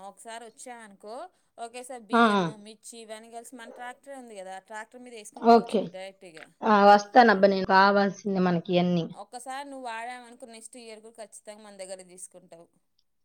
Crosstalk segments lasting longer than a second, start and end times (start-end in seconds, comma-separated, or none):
none